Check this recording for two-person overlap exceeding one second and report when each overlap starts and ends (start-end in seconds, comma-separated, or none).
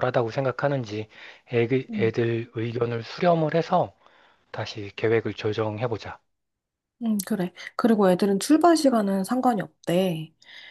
none